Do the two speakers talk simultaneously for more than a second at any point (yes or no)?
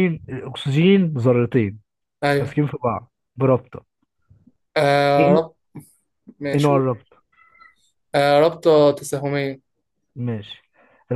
no